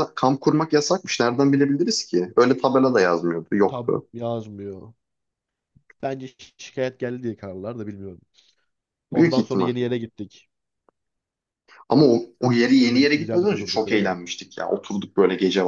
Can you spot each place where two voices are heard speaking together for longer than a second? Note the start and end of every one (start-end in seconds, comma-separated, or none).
12.8-14.2